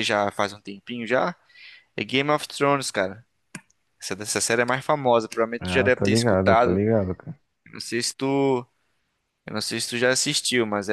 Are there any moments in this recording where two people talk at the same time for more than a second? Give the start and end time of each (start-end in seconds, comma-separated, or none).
5.6-6.8